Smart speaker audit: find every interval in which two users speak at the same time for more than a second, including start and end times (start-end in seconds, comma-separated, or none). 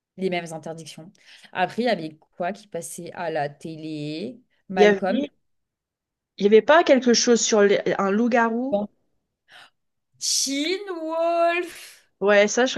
none